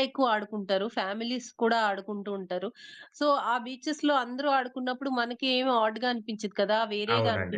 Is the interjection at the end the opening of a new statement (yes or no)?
no